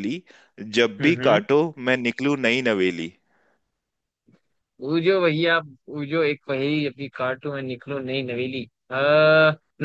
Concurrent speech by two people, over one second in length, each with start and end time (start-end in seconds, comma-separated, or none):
none